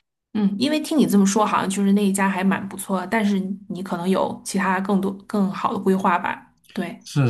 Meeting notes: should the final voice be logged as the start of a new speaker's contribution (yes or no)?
yes